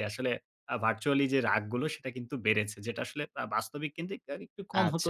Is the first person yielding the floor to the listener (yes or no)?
yes